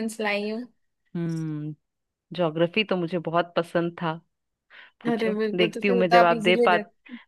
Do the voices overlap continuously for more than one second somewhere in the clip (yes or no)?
yes